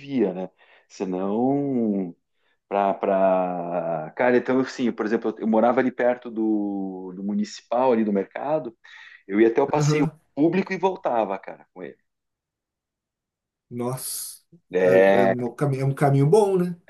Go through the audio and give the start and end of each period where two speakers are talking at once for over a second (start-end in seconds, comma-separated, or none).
none